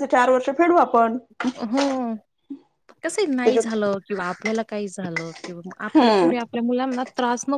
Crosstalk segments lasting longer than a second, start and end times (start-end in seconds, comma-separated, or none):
none